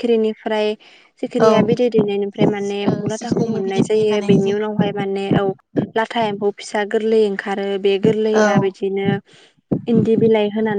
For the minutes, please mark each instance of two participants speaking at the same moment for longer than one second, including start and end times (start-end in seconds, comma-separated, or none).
2.9-5.0